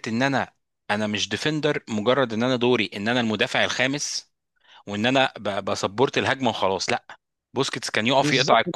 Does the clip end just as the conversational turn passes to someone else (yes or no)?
no